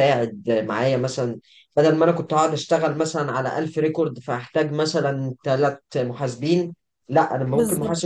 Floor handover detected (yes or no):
no